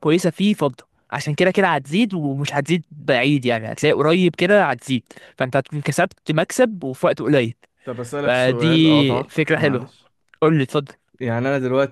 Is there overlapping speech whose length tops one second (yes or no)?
yes